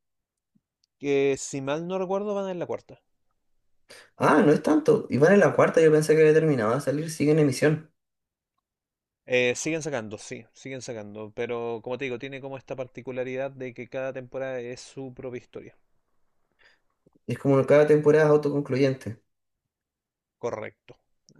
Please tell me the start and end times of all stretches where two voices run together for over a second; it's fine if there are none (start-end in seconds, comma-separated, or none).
none